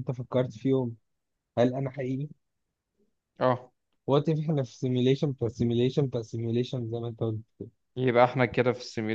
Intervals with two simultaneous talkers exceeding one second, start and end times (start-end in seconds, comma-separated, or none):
none